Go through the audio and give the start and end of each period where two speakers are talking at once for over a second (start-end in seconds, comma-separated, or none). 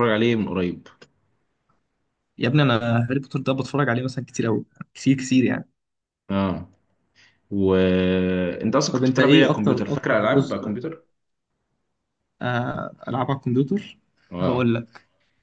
8.9-10.7